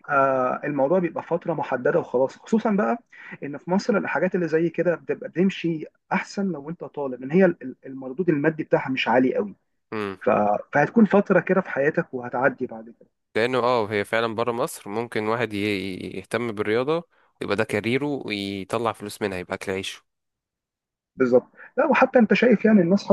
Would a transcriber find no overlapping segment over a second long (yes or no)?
yes